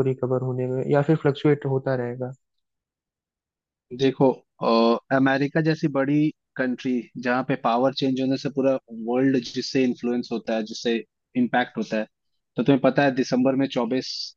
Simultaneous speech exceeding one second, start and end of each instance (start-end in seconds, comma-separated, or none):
none